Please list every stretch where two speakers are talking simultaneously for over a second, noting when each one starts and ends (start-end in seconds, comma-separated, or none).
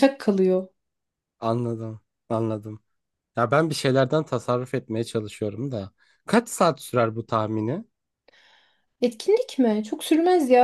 none